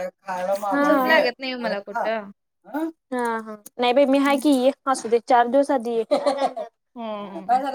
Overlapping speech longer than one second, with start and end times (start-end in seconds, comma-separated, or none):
0.8-2.1